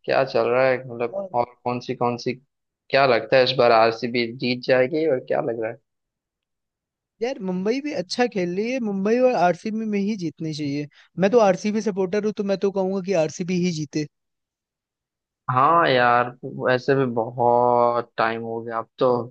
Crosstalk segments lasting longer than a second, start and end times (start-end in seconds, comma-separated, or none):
none